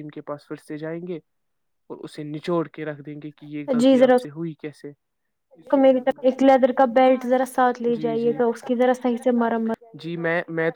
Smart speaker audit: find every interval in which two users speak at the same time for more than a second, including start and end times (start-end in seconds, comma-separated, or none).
7.0-9.9